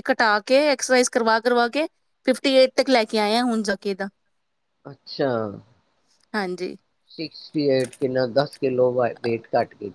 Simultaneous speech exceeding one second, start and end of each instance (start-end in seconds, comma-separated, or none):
none